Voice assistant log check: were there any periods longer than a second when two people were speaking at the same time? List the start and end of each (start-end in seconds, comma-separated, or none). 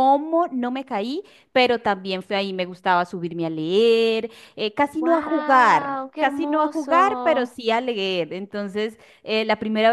5.0-7.5